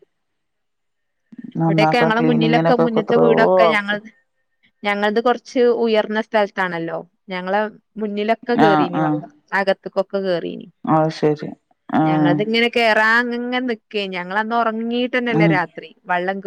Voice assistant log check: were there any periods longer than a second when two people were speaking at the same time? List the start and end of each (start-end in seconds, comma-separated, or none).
2.2-4.0